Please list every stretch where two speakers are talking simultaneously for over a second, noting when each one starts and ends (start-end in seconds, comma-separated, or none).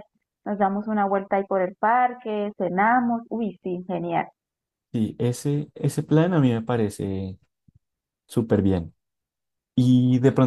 none